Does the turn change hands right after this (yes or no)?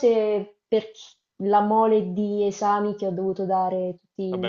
yes